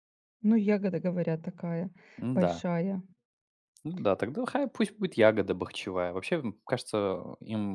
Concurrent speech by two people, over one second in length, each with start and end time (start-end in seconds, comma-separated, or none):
none